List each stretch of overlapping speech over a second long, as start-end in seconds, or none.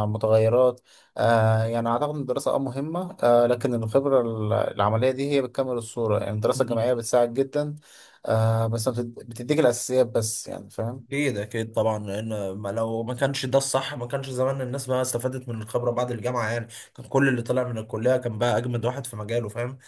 none